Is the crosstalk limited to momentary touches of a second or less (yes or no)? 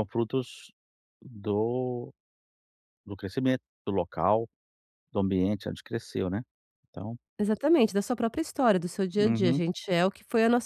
yes